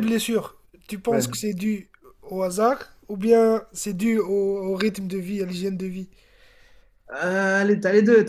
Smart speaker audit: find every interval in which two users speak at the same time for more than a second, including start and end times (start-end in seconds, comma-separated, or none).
none